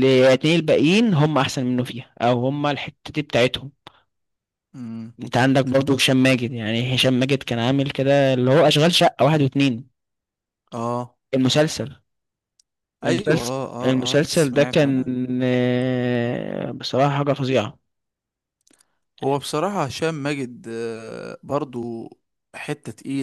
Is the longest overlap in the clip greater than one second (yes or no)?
yes